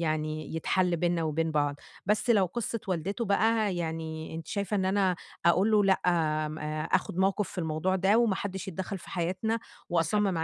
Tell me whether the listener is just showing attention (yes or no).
no